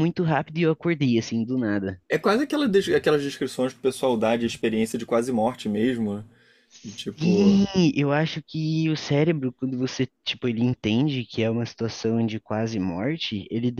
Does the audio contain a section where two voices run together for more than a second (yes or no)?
no